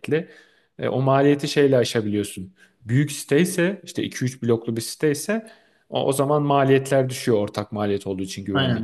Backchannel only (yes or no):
no